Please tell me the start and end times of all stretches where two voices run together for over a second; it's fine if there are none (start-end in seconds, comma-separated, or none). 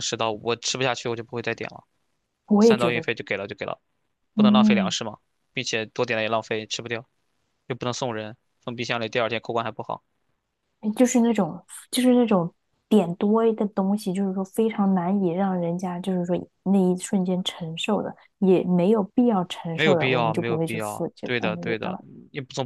19.7-22.0